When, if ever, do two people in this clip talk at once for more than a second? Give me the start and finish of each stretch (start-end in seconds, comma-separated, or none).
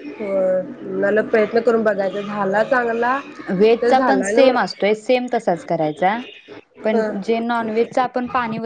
none